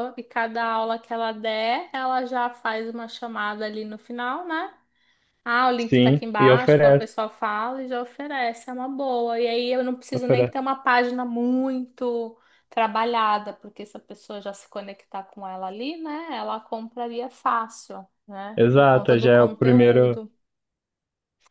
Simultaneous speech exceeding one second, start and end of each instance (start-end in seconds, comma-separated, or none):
5.8-7.1, 18.6-20.2